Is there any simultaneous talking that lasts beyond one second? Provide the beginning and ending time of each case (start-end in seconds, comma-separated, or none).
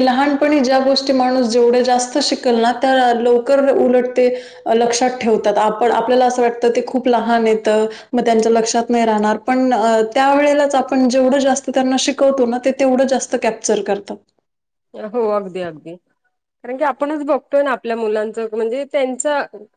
none